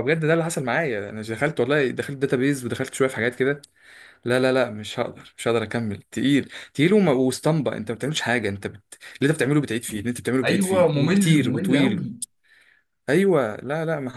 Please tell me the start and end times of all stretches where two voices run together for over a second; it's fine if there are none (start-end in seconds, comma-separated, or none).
10.4-12.1